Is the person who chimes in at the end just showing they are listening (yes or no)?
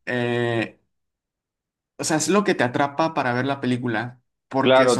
no